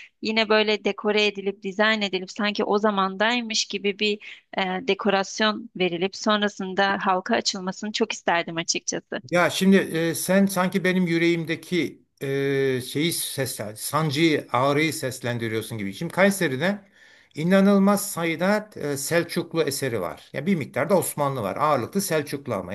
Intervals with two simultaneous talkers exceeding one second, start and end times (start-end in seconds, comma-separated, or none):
none